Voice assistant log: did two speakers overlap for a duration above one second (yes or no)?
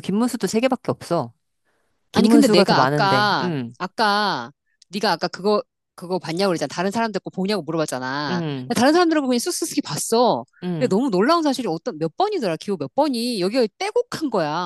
yes